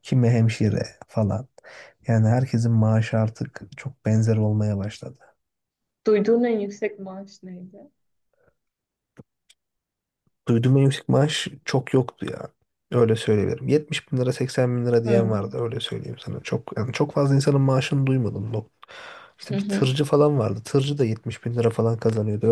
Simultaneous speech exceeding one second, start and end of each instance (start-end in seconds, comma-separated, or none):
none